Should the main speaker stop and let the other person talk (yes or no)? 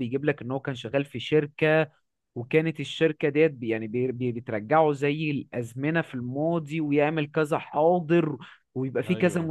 no